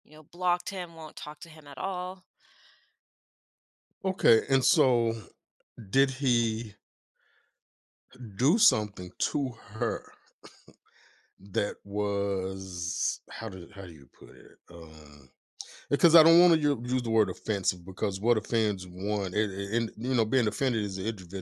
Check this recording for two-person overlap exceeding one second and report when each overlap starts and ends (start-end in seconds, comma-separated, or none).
none